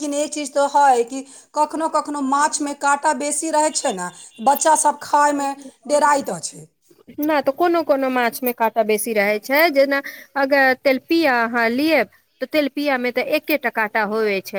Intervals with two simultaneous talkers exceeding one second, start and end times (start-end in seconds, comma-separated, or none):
none